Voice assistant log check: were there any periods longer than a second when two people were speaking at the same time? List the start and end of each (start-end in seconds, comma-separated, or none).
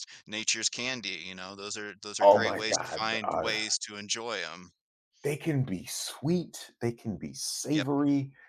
2.2-3.5